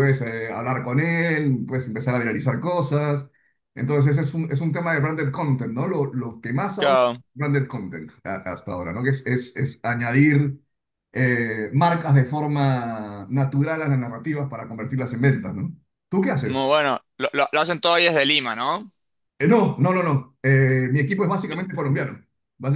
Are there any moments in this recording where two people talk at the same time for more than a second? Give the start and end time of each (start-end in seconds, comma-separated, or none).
none